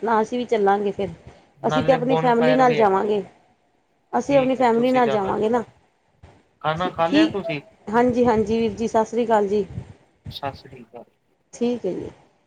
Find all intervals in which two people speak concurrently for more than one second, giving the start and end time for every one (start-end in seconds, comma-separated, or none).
1.7-3.1, 4.3-5.6